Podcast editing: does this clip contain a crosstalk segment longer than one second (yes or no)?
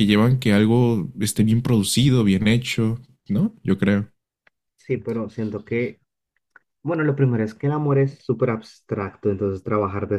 no